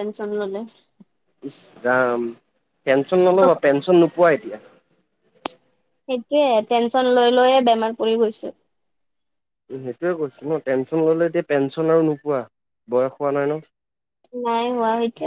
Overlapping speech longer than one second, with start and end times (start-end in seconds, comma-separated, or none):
none